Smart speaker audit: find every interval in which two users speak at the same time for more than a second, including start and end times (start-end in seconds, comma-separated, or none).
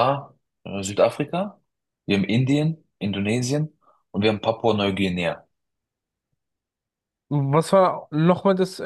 none